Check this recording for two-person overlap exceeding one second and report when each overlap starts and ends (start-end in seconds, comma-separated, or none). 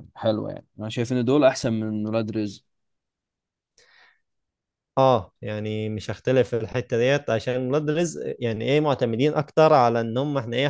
none